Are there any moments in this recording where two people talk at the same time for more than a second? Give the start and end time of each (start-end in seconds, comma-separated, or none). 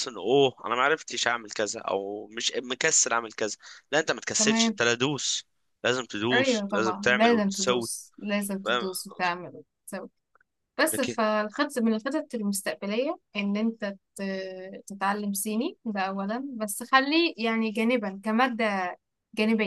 6.3-7.9